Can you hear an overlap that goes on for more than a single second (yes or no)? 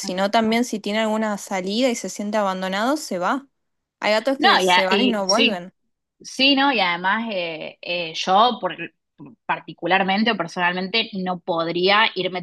yes